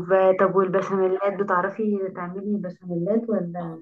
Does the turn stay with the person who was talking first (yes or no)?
no